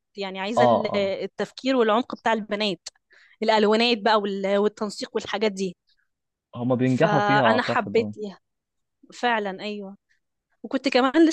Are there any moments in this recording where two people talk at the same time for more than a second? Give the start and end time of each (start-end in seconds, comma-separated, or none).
6.8-8.1